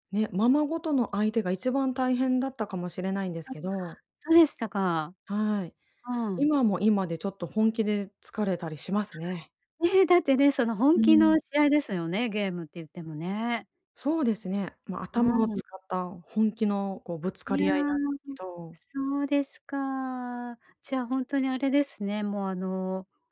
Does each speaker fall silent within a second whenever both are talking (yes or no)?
yes